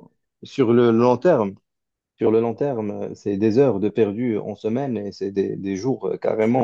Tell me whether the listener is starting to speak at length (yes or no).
no